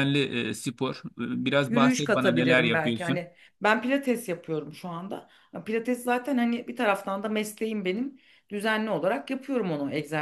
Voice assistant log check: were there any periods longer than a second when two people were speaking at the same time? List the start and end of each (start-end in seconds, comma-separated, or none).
1.7-3.2